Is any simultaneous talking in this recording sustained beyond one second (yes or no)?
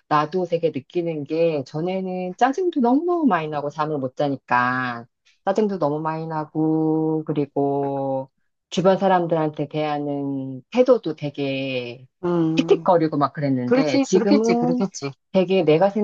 yes